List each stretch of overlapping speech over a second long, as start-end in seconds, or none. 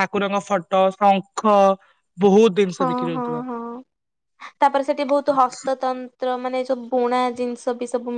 none